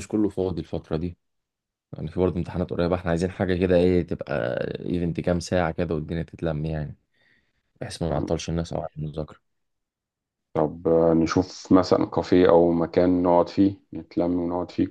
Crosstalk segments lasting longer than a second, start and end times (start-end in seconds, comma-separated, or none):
none